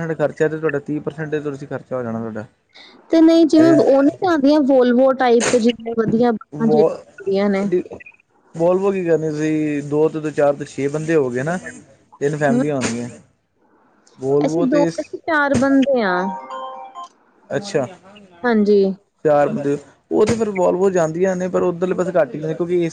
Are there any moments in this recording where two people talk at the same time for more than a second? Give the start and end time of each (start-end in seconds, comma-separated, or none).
none